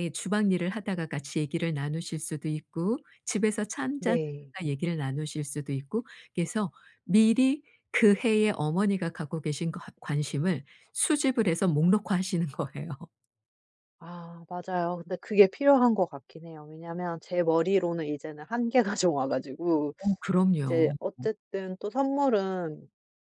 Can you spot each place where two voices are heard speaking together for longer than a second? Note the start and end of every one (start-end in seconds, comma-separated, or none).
none